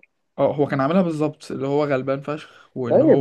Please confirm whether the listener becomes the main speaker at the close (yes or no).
yes